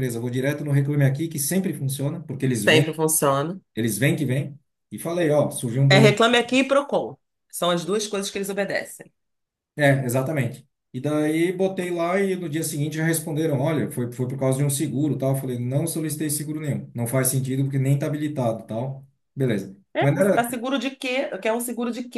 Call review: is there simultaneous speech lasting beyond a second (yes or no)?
no